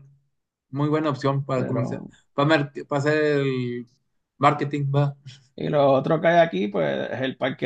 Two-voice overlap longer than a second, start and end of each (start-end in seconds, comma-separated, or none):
none